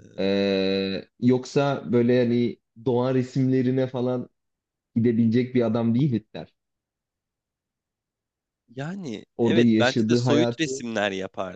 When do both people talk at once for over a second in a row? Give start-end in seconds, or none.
9.3-10.8